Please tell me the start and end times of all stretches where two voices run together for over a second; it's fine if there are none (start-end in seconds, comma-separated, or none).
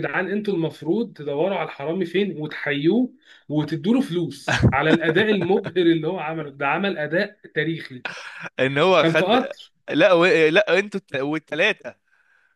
none